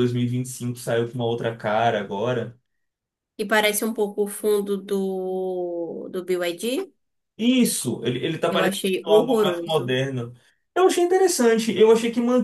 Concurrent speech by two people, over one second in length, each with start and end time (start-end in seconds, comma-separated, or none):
8.5-10.0